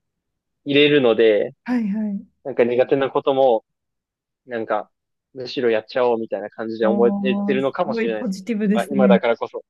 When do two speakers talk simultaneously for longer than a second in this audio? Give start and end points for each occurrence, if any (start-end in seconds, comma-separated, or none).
6.8-9.2